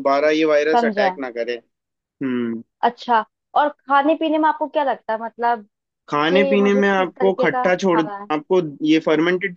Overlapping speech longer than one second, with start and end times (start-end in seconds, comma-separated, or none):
6.3-8.3